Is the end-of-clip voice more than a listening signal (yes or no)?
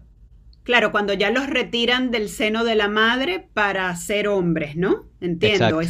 no